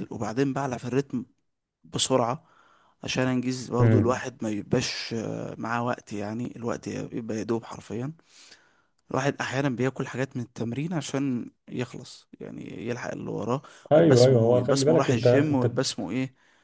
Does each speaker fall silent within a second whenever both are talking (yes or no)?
no